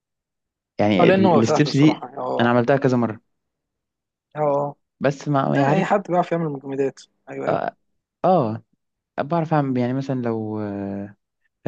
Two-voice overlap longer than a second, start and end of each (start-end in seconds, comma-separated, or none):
1.0-2.5